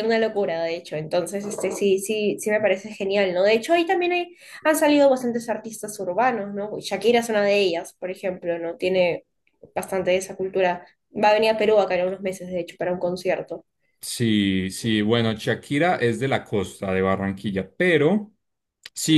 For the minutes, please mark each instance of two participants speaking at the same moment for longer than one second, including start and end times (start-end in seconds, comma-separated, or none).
none